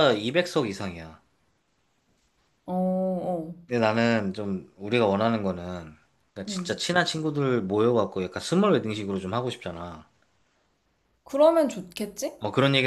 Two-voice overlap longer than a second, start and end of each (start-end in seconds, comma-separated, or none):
none